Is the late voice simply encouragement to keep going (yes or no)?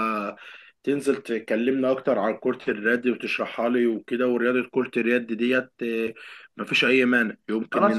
no